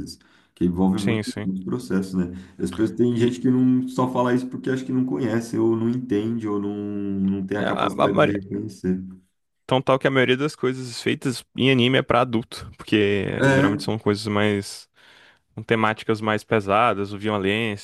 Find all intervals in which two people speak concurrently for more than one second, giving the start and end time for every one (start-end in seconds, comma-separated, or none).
none